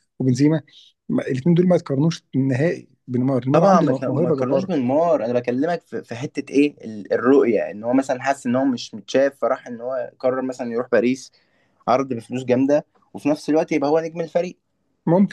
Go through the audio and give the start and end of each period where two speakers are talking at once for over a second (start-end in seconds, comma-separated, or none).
3.5-4.7